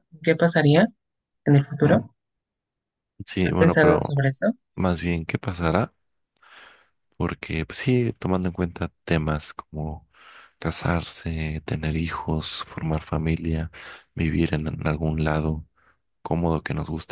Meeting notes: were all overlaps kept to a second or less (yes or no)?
yes